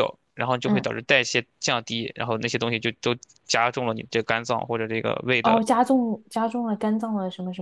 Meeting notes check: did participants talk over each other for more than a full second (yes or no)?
no